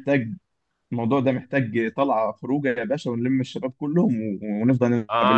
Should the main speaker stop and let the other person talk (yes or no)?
yes